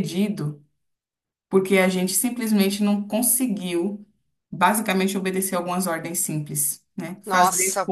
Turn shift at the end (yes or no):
yes